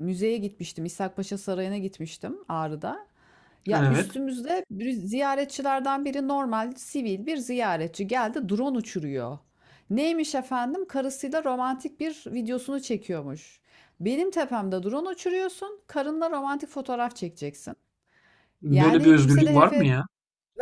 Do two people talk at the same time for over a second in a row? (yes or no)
yes